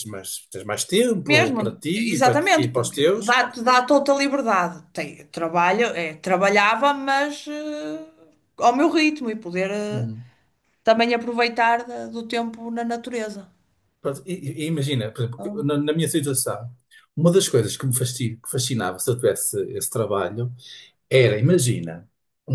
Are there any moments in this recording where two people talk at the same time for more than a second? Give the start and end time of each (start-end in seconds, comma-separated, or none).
1.3-3.4